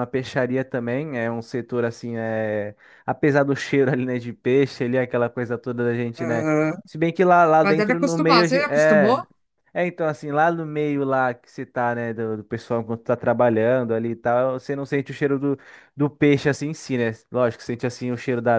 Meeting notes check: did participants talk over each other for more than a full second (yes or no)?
yes